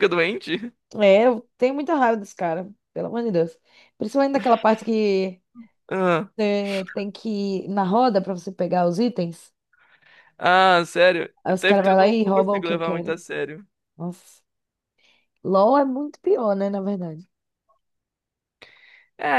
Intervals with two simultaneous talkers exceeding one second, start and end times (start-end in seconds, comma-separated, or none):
11.4-13.2